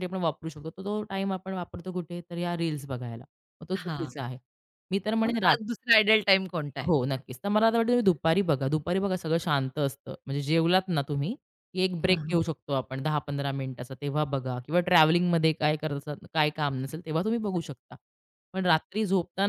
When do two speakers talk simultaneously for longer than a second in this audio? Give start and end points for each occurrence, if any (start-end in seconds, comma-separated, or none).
none